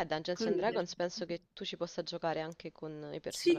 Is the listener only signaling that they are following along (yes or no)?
no